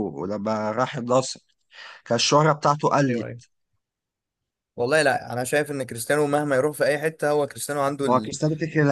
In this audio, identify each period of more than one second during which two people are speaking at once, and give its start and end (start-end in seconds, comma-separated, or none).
none